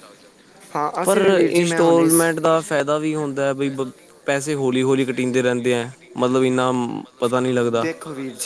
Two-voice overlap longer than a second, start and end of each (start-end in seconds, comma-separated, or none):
none